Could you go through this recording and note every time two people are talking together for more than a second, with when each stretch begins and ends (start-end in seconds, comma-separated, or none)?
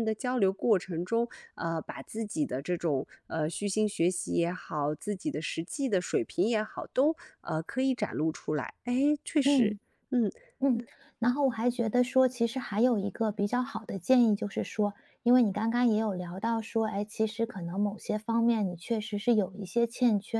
none